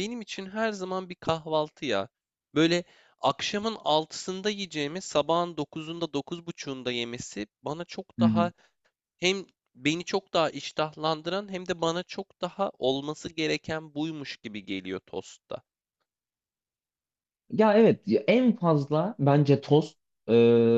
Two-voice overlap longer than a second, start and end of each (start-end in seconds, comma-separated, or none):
none